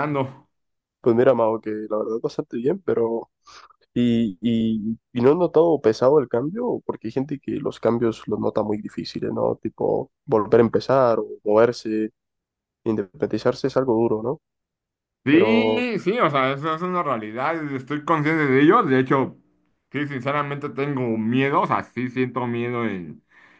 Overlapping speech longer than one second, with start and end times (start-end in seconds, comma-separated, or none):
none